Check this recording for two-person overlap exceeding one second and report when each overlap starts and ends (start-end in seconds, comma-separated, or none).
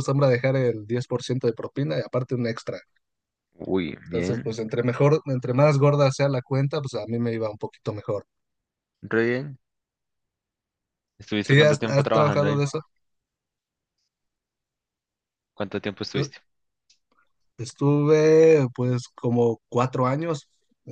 11.4-12.6